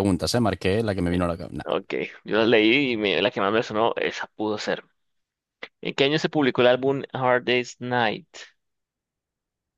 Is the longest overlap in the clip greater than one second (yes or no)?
no